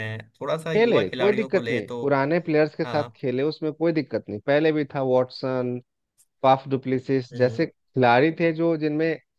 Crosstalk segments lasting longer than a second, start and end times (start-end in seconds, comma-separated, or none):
0.8-2.0